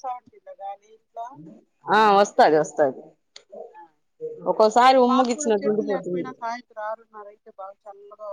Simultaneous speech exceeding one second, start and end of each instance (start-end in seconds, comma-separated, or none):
4.8-6.3